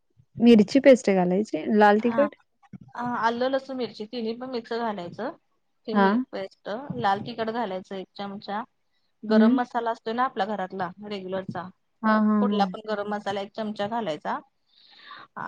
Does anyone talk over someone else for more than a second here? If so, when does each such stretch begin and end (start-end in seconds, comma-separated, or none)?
none